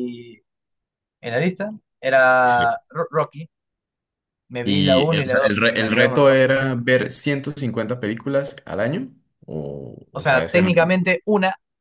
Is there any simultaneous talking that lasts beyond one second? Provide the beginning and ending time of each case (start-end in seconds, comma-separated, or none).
4.6-6.4